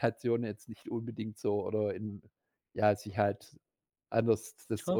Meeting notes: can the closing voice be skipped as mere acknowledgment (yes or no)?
yes